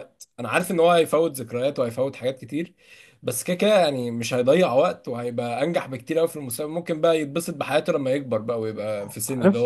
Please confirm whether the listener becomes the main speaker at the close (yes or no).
no